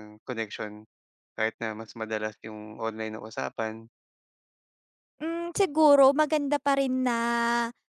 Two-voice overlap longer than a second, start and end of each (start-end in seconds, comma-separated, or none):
none